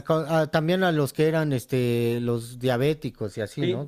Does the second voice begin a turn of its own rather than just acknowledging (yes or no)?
yes